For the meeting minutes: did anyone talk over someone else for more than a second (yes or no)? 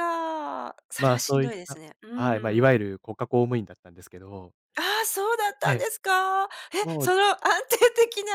yes